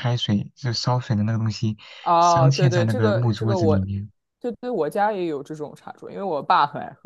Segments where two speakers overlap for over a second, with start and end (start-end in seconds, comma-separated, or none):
2.2-3.9